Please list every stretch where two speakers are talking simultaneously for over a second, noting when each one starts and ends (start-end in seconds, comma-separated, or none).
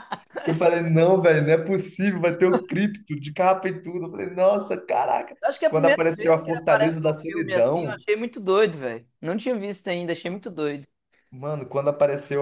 5.4-8.0